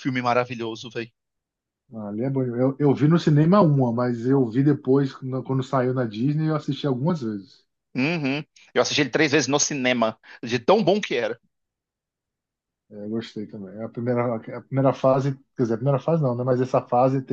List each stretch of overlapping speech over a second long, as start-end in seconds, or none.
none